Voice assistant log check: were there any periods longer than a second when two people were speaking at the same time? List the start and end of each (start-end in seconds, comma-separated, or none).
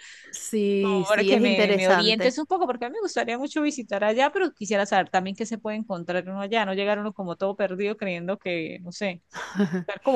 0.8-2.4